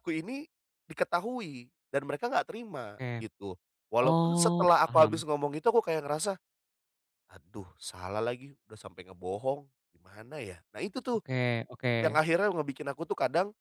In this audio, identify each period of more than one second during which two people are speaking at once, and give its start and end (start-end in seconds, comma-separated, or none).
4.0-5.2